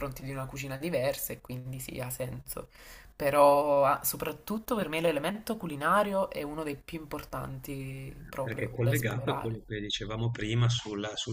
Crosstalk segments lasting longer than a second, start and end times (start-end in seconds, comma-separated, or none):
8.4-9.6